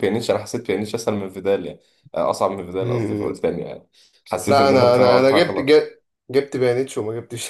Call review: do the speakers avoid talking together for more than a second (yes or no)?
no